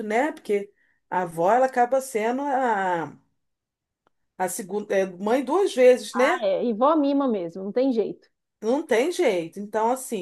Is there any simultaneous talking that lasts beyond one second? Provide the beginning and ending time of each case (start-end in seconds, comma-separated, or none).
none